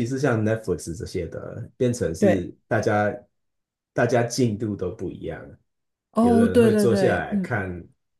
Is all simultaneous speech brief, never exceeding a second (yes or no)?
no